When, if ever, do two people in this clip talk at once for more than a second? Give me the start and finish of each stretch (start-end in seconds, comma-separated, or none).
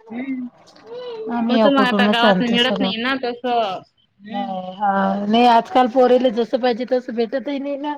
1.5-2.9